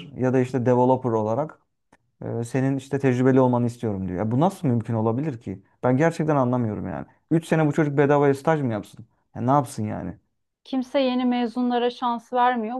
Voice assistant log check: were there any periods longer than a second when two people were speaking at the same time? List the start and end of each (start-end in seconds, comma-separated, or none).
none